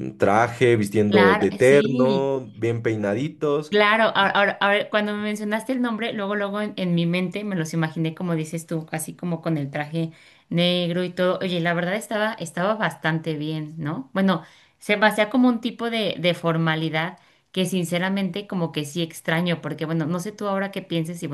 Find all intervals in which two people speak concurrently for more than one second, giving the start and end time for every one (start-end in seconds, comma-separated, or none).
1.1-2.3